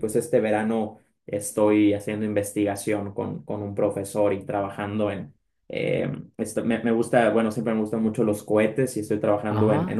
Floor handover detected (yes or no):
no